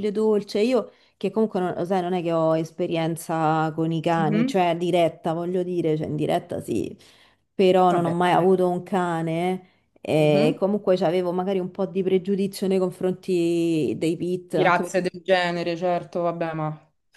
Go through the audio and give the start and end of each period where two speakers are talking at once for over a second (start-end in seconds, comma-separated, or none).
none